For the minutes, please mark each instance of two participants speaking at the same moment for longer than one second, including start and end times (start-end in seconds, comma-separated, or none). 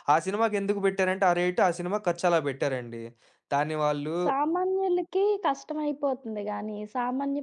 none